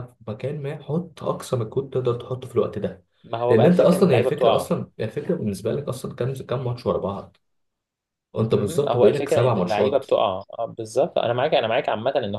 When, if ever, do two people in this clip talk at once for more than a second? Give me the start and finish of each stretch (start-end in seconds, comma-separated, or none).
3.5-4.7, 8.5-10.1